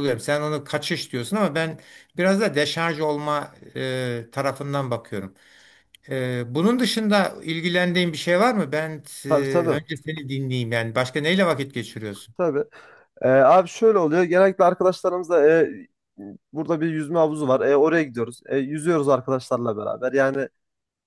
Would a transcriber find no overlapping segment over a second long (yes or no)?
yes